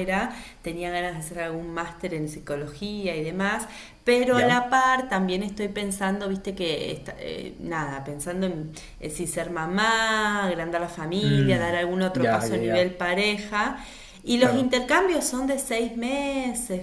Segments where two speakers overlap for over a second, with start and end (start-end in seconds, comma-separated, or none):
11.2-13.0